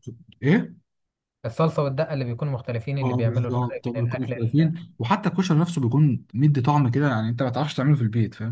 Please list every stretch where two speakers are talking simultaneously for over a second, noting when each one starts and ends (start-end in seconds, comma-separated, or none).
3.0-4.7